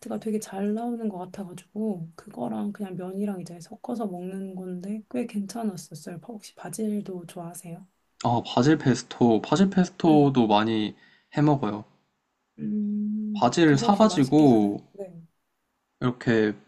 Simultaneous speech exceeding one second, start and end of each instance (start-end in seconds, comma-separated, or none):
13.3-14.8